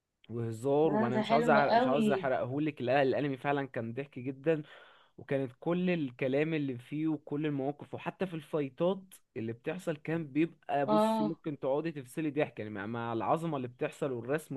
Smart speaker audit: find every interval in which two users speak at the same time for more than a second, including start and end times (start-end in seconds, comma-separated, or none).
0.8-2.3